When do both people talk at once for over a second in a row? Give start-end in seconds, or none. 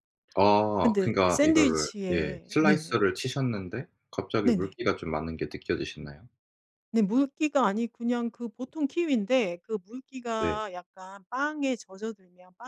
0.8-3.0